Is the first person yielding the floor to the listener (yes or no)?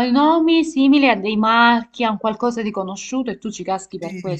yes